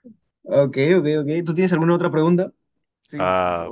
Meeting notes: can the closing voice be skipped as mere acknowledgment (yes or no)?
no